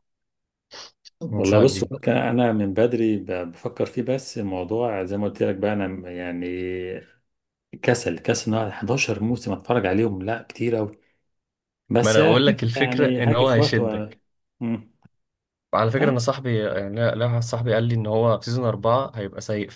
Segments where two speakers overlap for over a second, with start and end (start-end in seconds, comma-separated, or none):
12.0-14.1